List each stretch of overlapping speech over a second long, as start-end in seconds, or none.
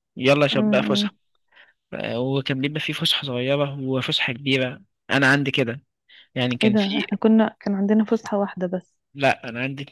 none